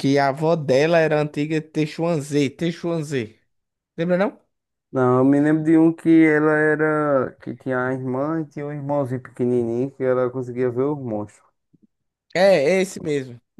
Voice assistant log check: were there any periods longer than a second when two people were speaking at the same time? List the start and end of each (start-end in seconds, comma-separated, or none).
none